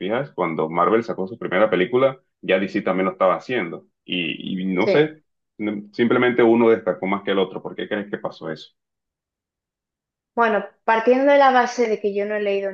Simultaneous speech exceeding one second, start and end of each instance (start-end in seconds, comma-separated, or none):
none